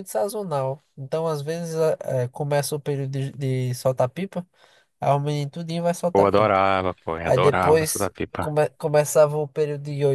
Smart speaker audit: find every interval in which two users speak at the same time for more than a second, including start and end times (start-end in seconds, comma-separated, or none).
7.2-8.5